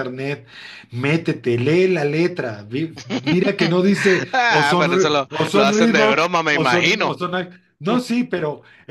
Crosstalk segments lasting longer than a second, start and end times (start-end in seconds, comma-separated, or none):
4.3-7.2